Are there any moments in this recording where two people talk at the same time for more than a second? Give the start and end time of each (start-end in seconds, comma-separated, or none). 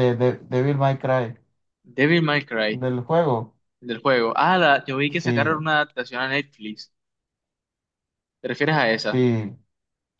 none